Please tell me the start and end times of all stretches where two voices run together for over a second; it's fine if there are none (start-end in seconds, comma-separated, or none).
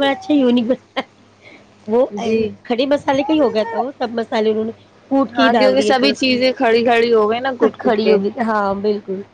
5.3-8.2